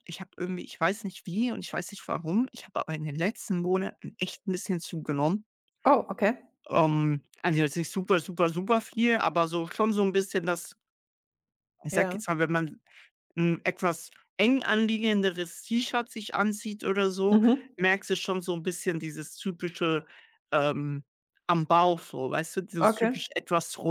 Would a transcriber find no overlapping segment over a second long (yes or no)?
yes